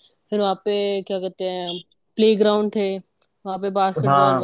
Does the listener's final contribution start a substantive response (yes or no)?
yes